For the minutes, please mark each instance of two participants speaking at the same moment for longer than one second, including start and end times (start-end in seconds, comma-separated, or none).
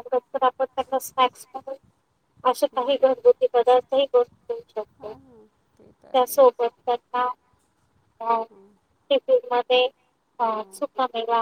5.0-6.6